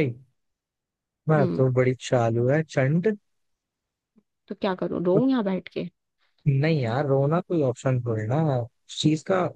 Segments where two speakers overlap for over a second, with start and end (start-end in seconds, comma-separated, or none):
none